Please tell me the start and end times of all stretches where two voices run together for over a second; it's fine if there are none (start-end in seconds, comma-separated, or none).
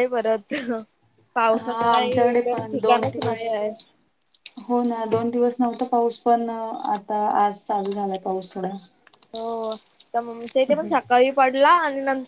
1.6-3.4